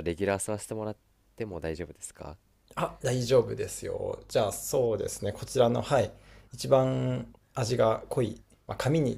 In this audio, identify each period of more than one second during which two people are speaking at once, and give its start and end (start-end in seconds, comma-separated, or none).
none